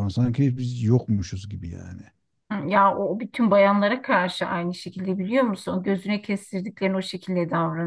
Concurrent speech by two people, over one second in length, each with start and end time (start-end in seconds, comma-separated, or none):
none